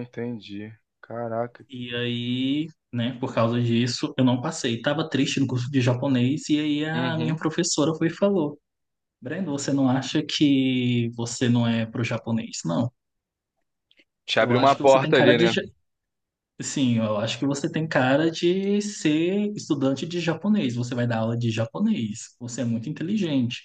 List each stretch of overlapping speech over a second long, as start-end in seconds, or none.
14.4-15.6